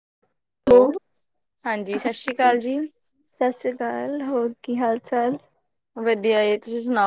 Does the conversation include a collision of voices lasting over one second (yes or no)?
no